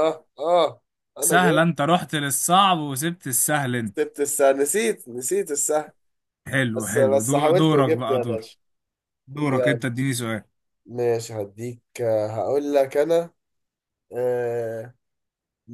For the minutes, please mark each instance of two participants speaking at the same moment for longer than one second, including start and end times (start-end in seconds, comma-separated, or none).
6.8-8.5